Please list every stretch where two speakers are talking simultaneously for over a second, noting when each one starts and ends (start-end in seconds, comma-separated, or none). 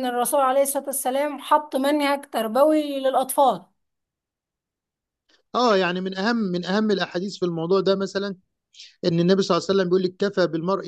none